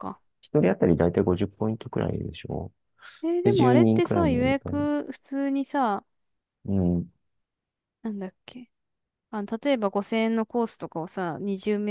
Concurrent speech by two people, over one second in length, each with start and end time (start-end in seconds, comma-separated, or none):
3.4-4.8